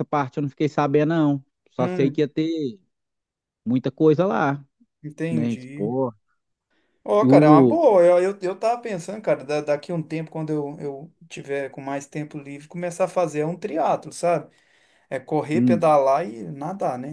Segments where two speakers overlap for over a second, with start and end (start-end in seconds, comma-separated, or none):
none